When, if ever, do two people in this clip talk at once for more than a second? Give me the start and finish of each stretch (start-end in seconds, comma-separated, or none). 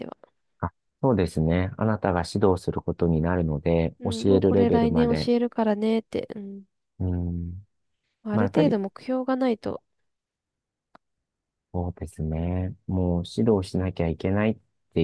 4.0-5.3